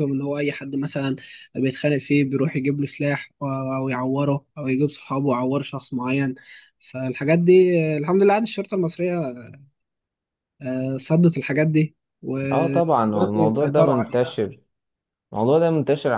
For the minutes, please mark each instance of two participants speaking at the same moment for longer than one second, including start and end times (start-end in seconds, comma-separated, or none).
12.5-14.4